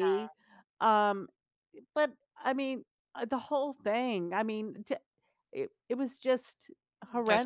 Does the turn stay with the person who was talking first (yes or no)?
no